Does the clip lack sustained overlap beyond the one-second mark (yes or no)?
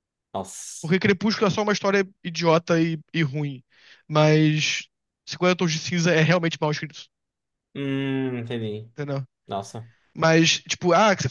yes